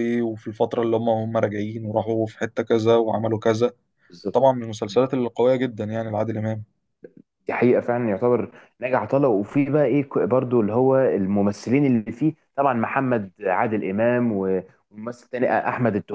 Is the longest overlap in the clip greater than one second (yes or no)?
no